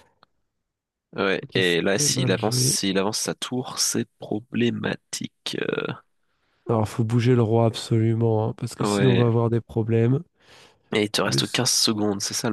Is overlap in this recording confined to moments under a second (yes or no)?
no